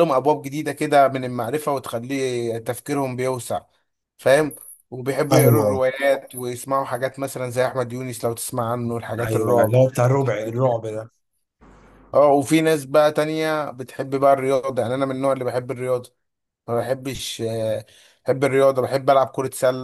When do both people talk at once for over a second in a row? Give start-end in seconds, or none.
none